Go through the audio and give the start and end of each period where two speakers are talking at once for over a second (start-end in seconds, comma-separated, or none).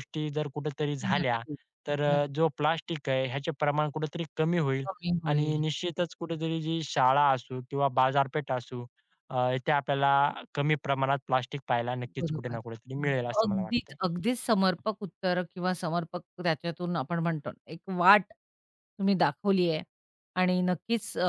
none